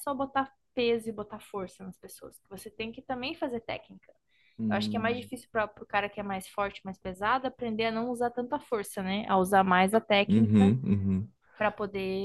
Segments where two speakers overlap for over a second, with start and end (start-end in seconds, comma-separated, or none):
none